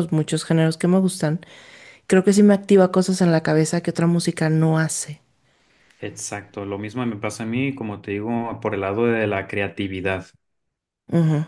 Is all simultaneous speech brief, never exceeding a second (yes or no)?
yes